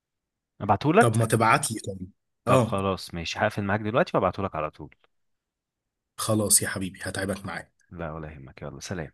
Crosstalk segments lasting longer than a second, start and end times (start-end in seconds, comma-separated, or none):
none